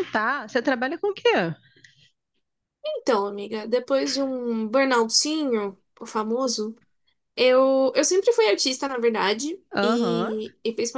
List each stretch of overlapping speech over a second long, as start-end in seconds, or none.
none